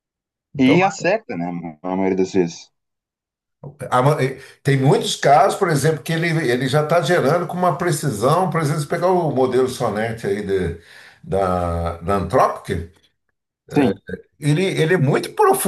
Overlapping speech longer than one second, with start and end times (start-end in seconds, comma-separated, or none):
none